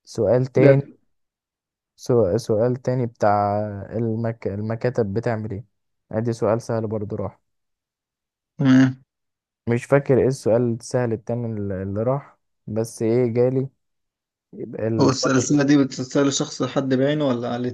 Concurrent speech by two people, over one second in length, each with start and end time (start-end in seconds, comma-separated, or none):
none